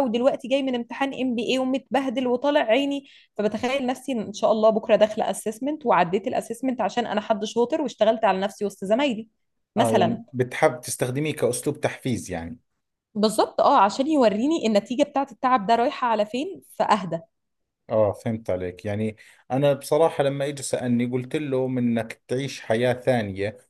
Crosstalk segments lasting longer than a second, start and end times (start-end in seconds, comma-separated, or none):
none